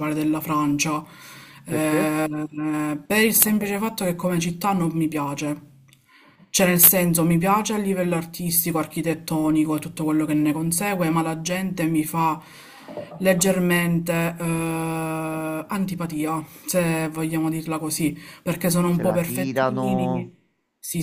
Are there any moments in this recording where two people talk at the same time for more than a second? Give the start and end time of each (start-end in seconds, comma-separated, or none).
18.9-20.3